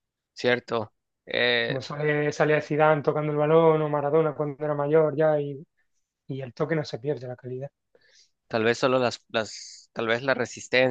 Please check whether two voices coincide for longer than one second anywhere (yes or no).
no